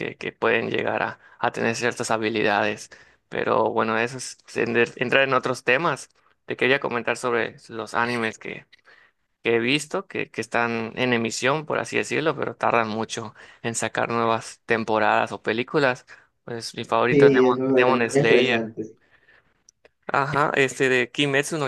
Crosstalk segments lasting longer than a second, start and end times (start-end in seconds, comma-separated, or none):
17.1-18.7